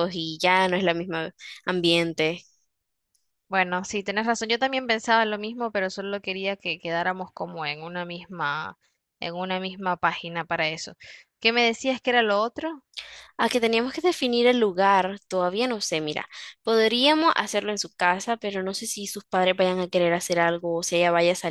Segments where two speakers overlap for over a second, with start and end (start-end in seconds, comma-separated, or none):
none